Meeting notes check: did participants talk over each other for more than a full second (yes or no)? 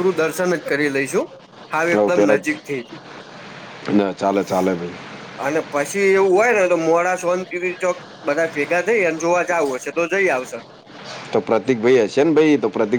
no